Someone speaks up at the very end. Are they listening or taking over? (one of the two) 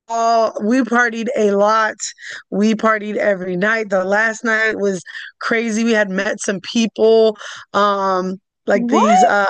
listening